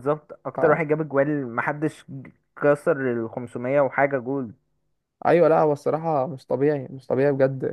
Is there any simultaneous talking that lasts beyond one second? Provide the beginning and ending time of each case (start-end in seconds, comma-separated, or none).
none